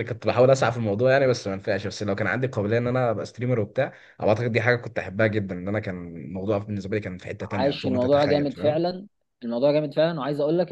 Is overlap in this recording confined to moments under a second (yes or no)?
no